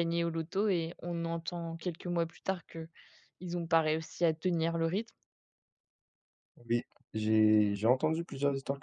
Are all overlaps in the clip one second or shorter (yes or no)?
yes